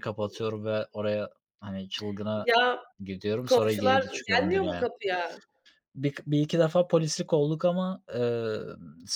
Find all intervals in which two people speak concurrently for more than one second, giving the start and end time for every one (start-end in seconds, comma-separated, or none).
3.5-4.9